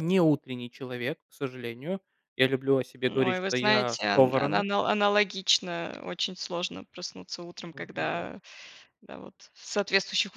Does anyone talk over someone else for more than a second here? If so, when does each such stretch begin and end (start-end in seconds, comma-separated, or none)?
3.1-4.7